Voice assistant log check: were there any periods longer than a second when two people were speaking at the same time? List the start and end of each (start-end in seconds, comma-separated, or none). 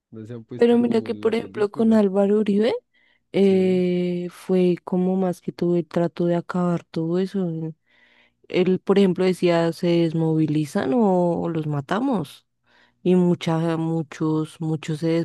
0.6-2.0